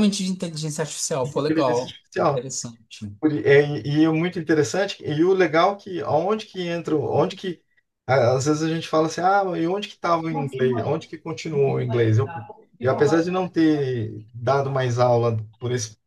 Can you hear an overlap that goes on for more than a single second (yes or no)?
yes